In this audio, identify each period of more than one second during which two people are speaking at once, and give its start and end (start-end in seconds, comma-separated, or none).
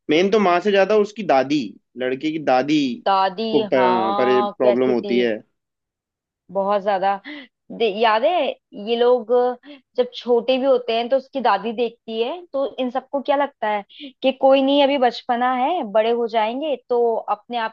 3.5-5.3